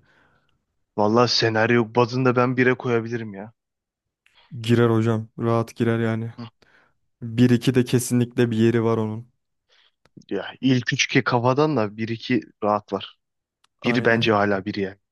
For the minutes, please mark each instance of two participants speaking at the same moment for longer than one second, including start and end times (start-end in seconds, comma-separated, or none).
none